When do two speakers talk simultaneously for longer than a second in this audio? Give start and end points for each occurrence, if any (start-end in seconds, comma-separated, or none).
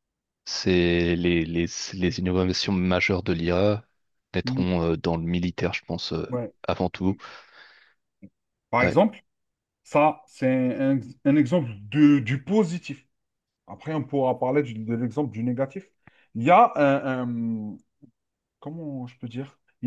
none